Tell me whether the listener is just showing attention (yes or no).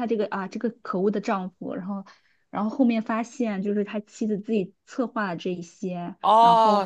no